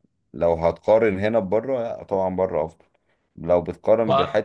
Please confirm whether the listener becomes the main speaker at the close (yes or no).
no